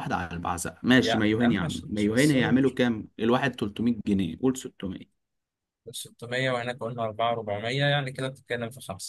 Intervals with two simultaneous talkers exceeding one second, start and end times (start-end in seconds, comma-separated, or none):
1.0-2.6